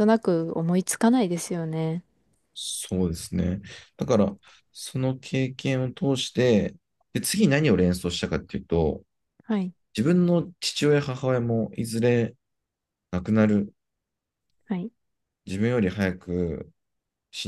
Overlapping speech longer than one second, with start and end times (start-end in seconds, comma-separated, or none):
none